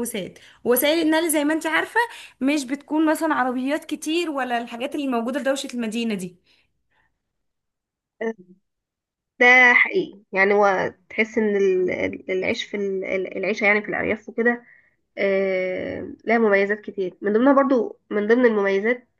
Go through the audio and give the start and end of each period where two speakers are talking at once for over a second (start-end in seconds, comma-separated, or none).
none